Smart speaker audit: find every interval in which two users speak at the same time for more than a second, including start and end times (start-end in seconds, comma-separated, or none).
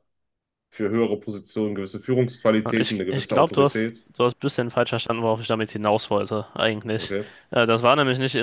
2.8-4.1